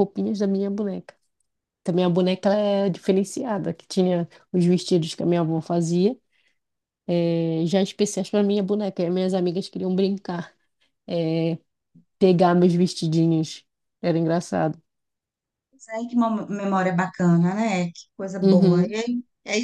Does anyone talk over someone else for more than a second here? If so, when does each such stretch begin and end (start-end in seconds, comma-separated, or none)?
none